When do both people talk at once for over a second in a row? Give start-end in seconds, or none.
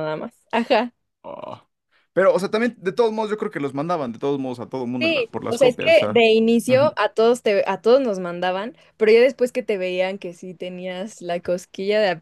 5.0-6.2